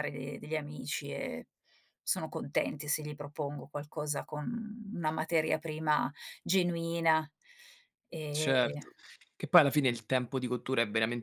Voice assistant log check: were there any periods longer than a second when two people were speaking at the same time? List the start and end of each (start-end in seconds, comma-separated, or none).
none